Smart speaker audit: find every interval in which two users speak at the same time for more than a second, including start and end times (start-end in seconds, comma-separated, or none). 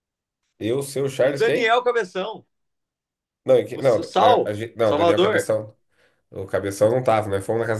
3.7-5.5